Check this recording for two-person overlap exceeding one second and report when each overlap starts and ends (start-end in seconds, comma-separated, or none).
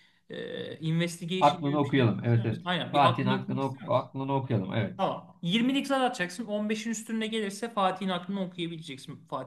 1.4-4.1